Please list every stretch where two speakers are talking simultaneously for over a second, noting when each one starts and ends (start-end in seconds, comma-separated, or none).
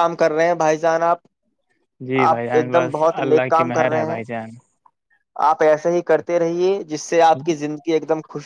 2.3-4.2